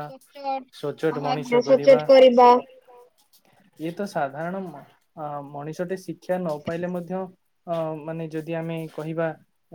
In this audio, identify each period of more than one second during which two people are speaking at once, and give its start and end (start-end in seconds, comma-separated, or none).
0.8-2.0